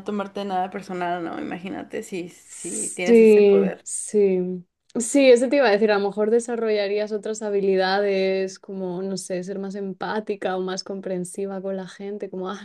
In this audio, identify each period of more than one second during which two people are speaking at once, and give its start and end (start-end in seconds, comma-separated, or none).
2.4-3.9